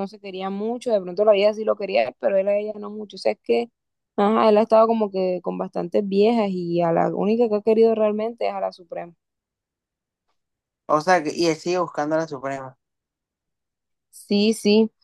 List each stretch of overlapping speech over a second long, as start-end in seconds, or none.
none